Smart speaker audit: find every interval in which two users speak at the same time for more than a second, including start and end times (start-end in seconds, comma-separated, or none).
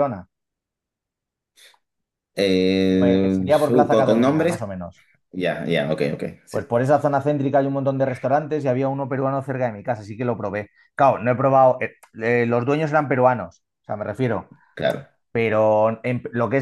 2.9-4.7